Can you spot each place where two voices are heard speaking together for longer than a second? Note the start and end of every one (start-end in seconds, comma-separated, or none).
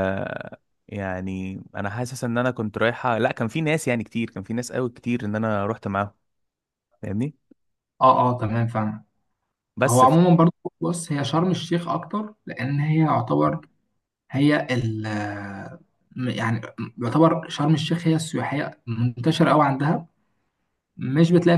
none